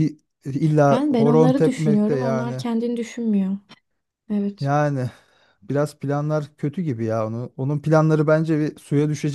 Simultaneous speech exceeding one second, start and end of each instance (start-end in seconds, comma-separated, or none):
0.9-2.6